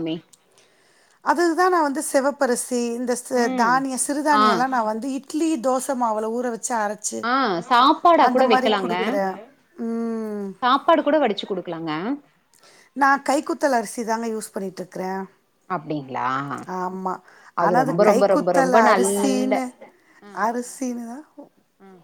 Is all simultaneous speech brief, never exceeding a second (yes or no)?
no